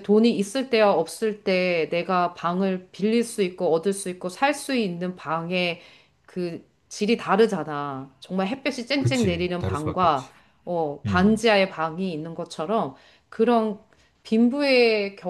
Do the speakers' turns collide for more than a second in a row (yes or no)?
yes